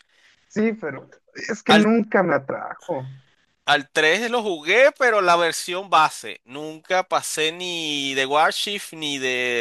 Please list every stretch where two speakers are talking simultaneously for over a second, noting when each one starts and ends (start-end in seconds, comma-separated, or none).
none